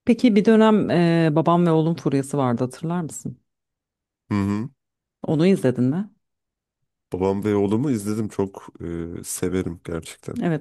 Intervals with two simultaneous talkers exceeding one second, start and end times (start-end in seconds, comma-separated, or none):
none